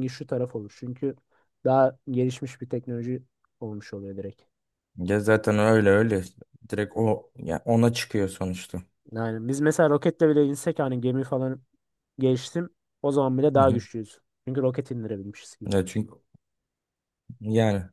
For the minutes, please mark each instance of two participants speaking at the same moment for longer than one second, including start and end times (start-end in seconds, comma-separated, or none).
none